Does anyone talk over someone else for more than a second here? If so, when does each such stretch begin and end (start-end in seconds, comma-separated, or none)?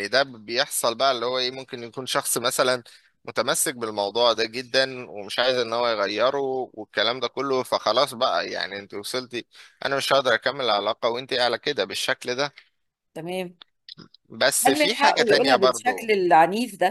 14.7-16.1